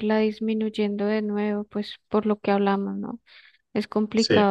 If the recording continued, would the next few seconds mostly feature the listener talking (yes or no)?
no